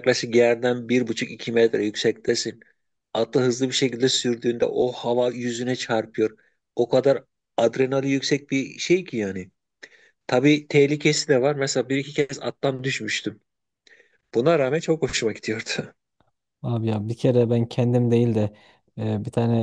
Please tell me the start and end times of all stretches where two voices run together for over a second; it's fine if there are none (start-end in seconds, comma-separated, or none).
none